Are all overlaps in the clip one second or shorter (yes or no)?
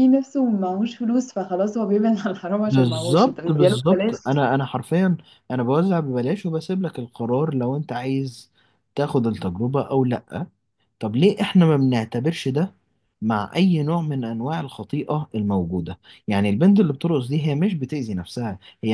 no